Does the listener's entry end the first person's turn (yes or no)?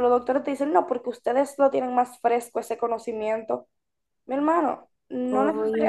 no